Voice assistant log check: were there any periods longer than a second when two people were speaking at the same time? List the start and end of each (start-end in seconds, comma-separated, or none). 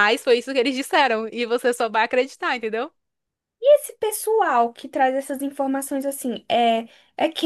none